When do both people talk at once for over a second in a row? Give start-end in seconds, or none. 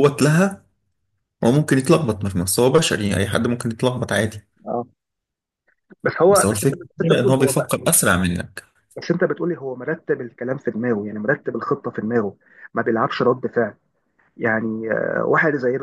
6.3-7.8